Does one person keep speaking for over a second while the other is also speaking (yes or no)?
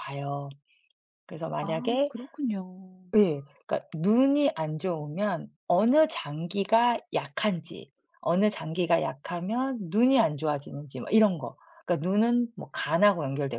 no